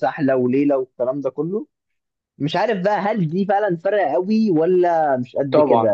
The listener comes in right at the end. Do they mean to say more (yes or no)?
no